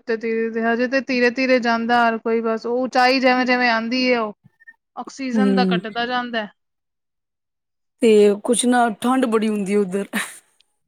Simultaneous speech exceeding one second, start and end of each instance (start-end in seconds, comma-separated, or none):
none